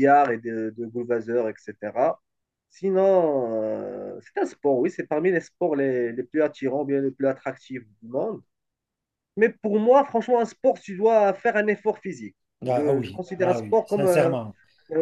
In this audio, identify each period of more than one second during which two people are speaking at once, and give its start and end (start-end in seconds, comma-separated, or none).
12.7-14.4